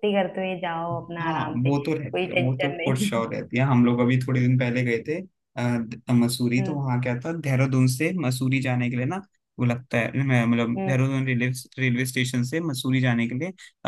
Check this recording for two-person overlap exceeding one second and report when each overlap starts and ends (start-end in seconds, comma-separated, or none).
1.2-3.1